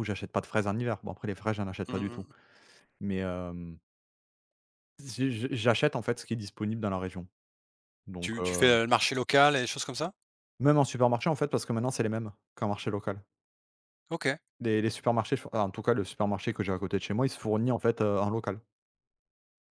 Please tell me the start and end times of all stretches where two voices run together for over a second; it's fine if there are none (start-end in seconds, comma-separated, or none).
none